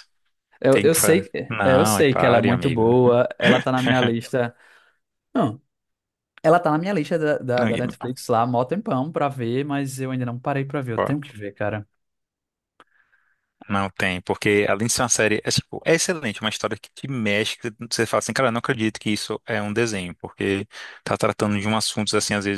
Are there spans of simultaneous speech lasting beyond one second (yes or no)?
yes